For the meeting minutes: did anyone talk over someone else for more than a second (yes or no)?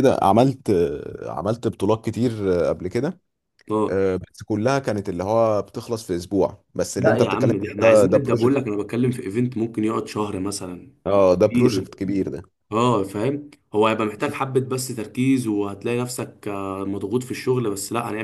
yes